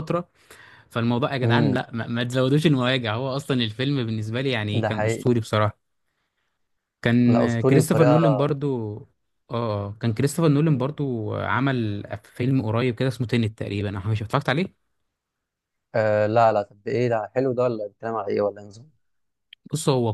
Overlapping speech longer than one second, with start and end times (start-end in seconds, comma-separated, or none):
7.3-8.6